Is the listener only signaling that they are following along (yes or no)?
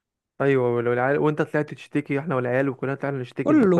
no